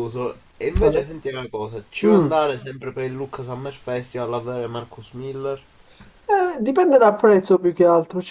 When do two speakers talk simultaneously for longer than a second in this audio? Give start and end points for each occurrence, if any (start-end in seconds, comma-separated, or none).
none